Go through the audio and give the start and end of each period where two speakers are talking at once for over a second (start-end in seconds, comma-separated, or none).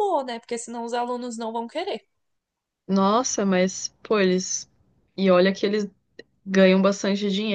none